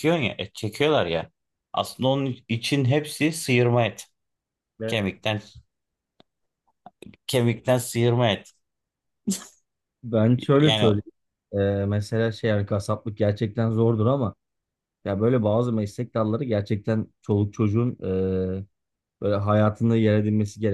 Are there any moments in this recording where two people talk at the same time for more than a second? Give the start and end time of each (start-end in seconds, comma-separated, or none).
none